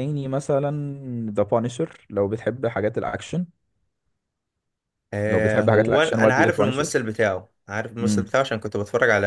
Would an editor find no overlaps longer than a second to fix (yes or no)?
no